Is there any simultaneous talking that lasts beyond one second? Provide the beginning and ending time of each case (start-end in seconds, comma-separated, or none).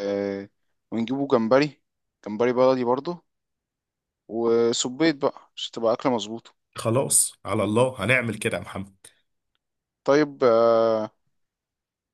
none